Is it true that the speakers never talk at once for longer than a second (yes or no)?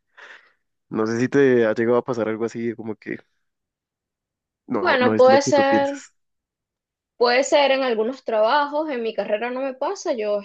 no